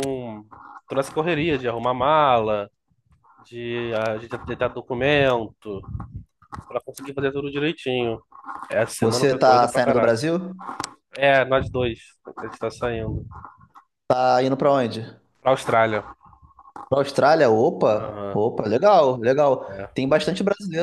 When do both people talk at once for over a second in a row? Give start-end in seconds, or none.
9.0-10.3